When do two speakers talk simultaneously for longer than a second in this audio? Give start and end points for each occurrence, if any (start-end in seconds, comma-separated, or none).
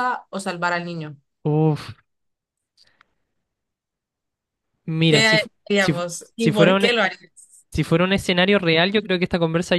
5.1-6.9